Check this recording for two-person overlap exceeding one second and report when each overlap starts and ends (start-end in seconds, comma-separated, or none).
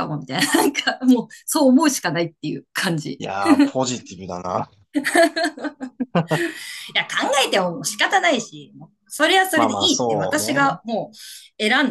9.5-10.8